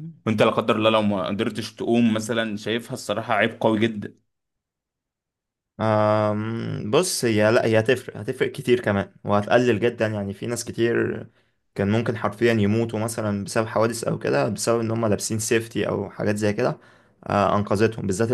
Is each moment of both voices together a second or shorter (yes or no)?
yes